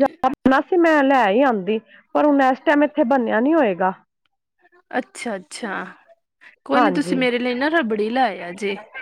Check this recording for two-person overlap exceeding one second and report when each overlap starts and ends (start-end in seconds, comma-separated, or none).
none